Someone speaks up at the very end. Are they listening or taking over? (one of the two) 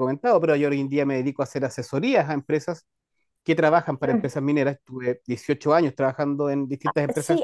taking over